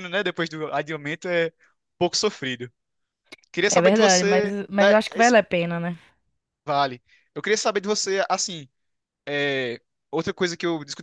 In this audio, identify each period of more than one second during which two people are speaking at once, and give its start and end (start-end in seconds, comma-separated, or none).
3.8-5.3